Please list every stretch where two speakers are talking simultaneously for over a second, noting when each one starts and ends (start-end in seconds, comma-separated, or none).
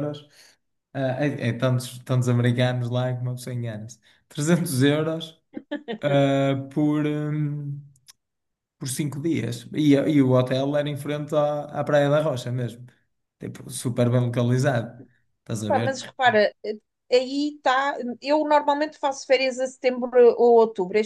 none